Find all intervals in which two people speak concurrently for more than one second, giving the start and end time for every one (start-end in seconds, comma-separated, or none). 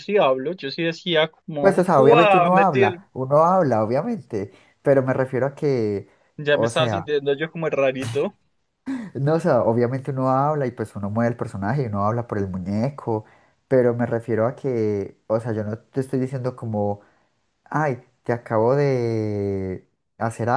1.6-3.0